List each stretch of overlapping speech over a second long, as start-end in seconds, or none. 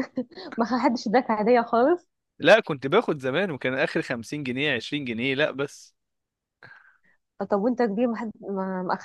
none